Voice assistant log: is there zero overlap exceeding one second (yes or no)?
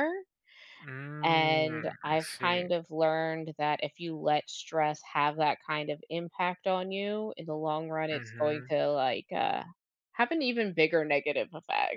no